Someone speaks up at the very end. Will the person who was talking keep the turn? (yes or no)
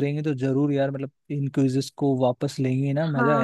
no